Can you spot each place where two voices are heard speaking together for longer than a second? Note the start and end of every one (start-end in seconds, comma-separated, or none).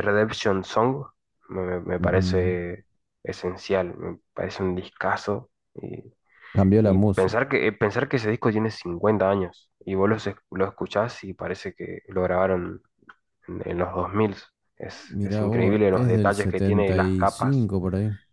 15.1-17.7